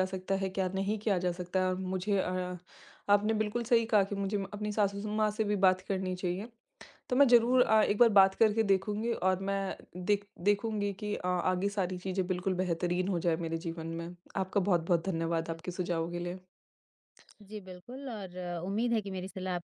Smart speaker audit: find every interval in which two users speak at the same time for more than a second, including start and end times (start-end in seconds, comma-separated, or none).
none